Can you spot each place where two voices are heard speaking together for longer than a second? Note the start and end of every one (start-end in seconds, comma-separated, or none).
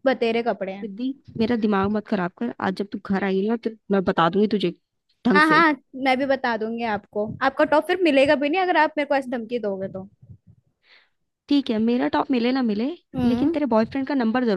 none